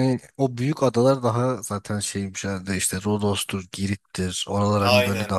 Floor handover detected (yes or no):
yes